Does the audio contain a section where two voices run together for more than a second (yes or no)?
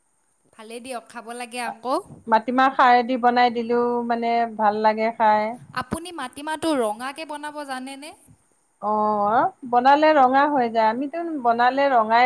no